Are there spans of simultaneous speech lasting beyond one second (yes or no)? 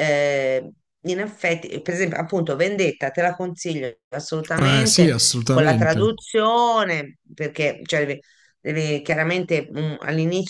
yes